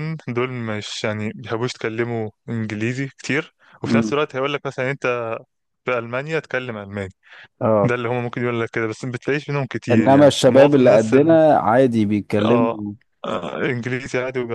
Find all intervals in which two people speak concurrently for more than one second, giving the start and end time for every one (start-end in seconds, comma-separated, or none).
9.9-11.4